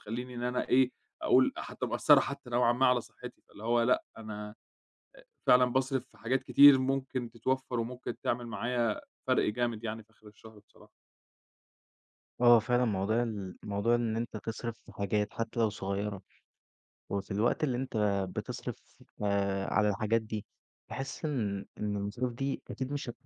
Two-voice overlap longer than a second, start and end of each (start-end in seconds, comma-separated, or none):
none